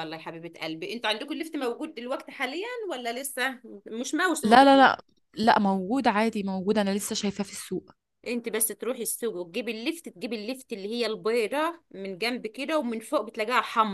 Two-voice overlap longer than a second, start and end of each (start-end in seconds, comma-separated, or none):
none